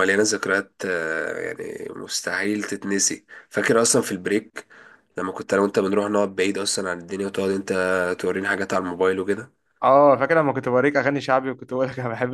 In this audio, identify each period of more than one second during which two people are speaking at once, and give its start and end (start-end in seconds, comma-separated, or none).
none